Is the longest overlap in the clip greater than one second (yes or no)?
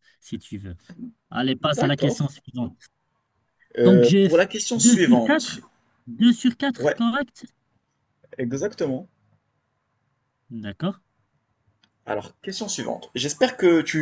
yes